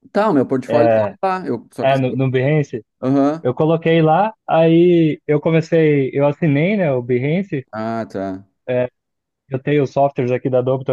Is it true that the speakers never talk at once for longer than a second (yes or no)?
yes